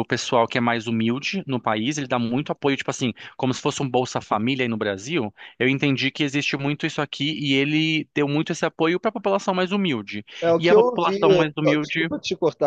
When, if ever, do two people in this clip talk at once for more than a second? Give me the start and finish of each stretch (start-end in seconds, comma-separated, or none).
10.4-12.1